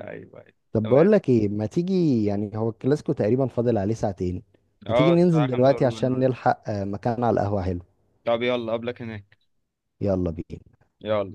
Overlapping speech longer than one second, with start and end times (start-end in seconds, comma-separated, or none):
4.9-6.3